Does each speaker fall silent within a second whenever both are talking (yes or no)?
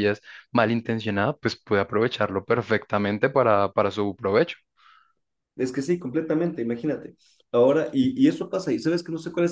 yes